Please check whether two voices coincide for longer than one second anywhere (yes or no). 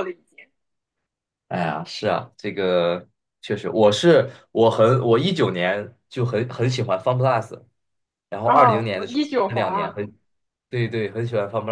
yes